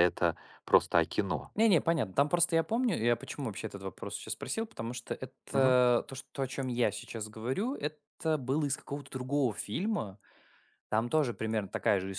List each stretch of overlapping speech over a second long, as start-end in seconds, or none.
none